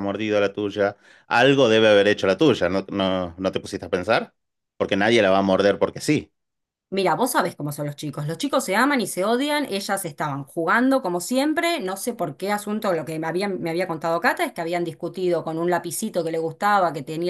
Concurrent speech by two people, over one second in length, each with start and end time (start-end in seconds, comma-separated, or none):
none